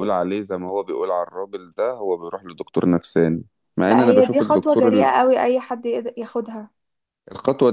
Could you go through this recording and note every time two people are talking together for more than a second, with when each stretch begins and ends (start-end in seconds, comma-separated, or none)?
3.9-5.1